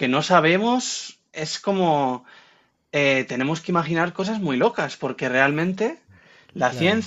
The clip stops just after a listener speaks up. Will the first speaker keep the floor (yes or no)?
yes